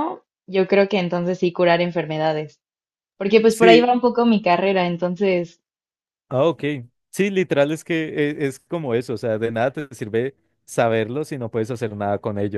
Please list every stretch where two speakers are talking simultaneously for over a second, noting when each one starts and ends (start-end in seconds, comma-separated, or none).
none